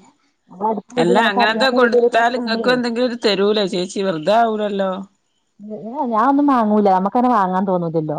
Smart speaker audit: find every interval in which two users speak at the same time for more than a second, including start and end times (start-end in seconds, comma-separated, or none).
1.0-2.8